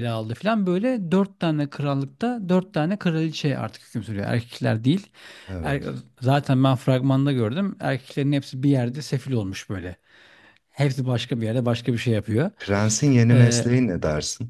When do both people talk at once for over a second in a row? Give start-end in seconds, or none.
none